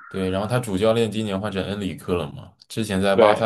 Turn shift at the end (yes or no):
no